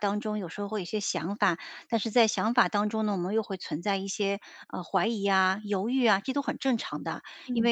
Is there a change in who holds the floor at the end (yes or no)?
no